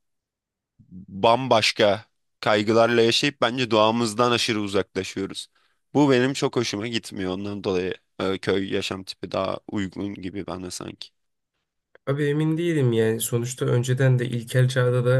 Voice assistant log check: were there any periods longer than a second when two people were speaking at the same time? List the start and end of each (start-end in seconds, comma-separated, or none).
none